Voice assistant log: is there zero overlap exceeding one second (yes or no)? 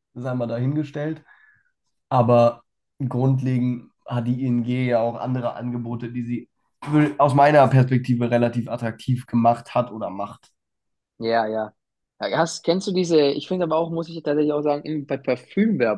yes